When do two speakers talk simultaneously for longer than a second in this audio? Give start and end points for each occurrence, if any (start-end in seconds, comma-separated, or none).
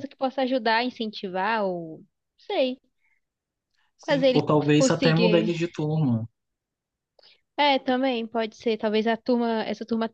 4.0-5.5